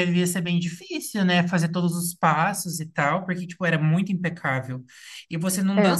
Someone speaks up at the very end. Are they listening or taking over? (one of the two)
listening